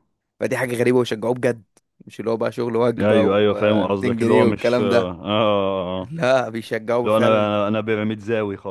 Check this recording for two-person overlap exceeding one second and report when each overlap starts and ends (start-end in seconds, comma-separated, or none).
3.0-5.1